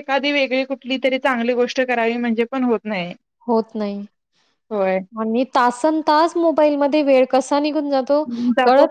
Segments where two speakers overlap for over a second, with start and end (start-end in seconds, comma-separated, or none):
none